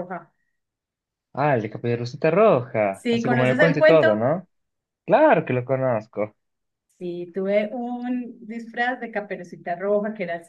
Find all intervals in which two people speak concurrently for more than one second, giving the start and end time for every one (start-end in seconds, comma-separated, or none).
2.9-4.2